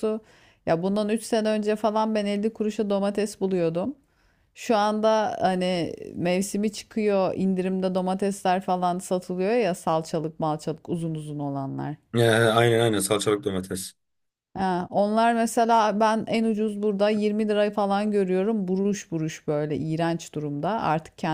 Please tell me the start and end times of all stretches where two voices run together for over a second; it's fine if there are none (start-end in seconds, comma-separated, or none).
none